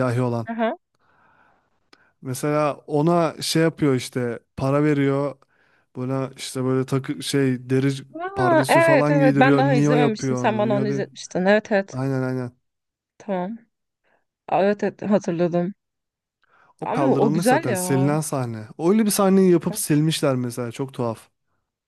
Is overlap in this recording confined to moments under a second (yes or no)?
no